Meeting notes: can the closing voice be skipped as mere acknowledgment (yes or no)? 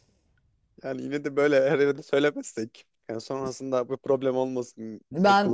no